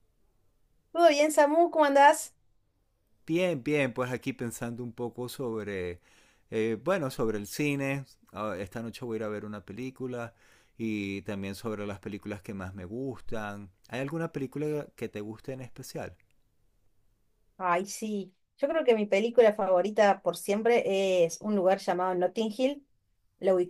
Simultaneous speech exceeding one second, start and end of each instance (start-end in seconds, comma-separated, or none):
none